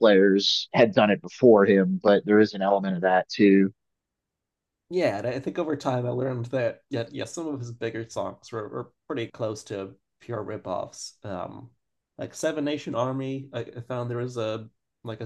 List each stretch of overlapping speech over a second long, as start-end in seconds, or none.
none